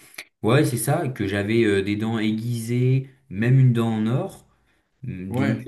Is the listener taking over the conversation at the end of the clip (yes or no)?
no